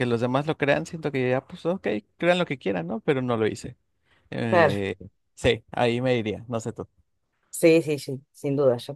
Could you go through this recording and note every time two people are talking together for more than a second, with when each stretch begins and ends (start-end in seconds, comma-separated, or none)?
none